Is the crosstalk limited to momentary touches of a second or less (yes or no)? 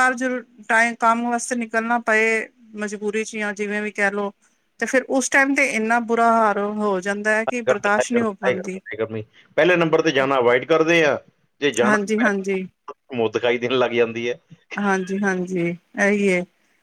yes